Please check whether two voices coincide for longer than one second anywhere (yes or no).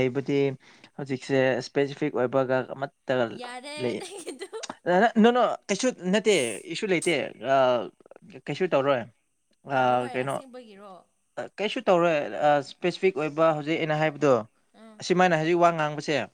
no